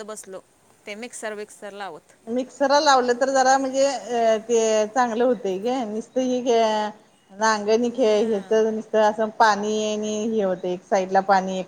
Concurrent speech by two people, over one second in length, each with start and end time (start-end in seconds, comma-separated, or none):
none